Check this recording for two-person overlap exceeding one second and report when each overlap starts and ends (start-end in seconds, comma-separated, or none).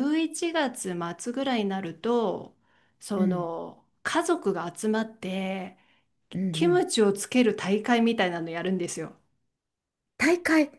none